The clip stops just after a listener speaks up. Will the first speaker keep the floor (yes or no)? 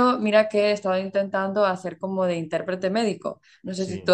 yes